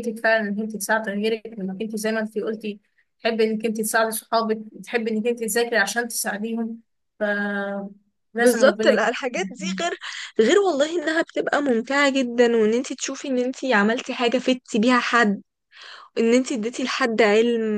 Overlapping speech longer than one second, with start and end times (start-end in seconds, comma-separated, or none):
8.4-9.8